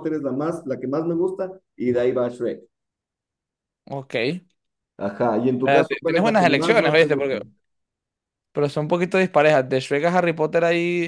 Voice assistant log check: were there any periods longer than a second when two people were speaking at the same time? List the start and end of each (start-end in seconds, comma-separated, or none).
5.6-7.2